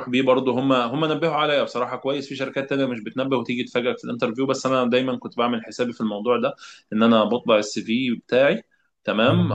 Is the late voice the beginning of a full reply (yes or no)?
yes